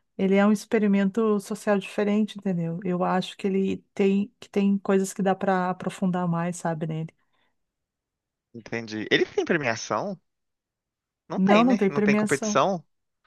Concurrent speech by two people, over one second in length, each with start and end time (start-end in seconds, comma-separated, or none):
11.4-12.6